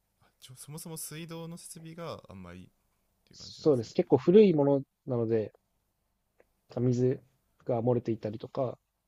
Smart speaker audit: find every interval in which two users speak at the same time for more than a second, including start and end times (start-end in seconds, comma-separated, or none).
none